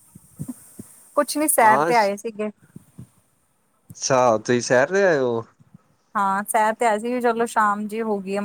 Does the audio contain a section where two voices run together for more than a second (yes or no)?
no